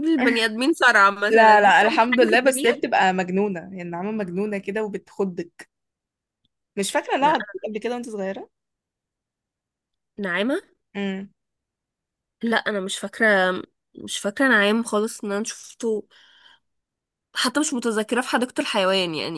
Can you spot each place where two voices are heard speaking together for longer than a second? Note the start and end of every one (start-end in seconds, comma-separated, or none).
1.3-2.9